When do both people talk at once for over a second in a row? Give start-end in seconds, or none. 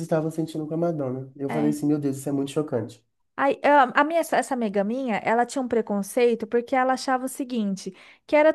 none